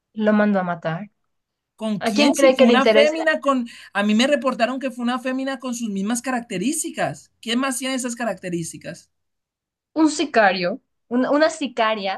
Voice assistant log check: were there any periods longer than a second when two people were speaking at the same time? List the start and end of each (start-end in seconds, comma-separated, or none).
2.0-3.2